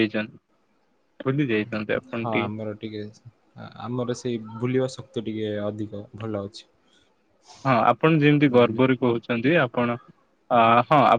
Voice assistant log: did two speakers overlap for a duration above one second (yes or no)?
no